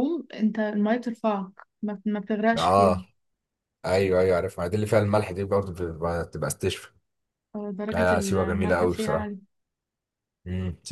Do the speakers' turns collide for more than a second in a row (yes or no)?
yes